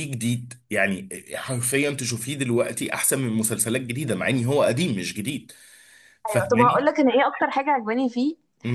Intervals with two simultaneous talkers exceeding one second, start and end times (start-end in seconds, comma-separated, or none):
none